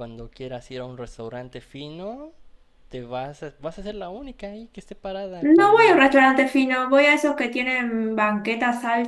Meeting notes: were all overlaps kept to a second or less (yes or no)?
yes